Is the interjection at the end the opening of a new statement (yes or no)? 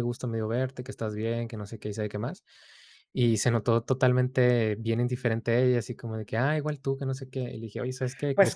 no